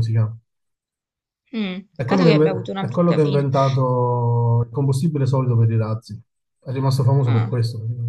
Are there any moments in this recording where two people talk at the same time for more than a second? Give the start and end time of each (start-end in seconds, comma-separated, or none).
1.9-3.5